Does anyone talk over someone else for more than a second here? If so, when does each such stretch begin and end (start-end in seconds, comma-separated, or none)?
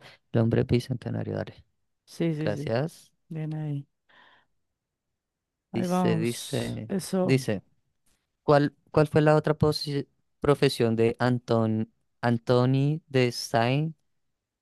5.7-7.4